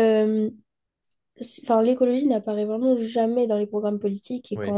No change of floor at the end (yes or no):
yes